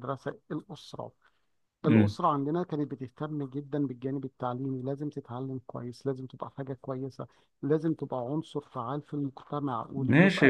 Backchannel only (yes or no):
no